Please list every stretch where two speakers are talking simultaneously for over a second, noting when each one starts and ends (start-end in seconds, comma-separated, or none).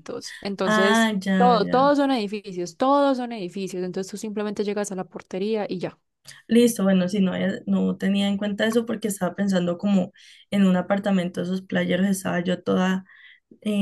0.6-1.9